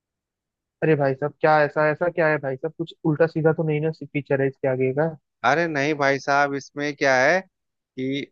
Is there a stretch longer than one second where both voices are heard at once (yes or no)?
no